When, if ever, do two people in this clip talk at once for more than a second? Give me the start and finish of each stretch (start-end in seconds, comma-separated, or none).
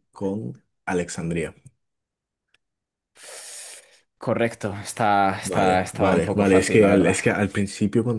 5.4-7.2